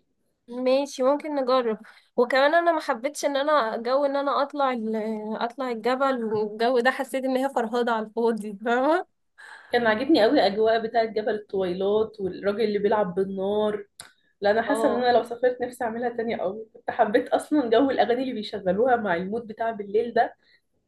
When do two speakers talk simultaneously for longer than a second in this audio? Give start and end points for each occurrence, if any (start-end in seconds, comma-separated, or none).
none